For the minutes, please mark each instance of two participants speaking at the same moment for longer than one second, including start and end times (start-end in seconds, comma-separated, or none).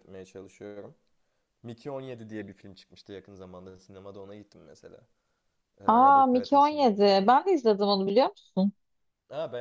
5.9-7.3